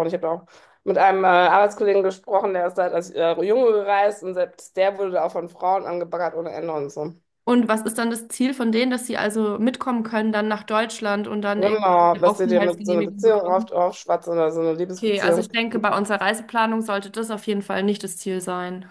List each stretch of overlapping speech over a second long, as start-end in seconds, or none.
11.6-13.7